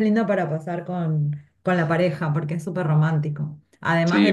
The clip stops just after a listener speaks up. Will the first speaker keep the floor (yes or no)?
no